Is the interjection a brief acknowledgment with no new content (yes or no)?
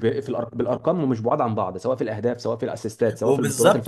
no